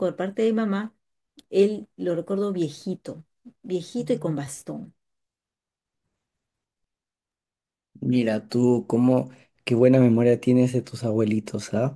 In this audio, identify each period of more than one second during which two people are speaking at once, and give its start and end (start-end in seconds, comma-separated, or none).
none